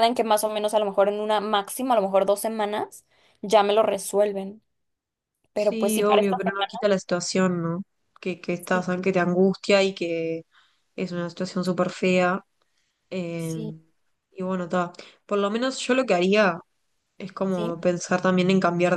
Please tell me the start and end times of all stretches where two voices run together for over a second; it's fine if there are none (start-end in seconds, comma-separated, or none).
5.5-6.8